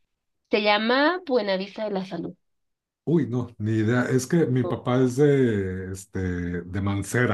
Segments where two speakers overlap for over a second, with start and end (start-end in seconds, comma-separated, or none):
none